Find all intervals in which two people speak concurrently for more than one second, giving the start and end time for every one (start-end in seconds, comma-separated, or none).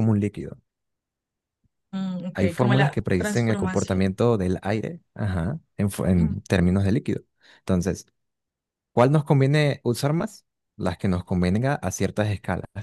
2.3-4.0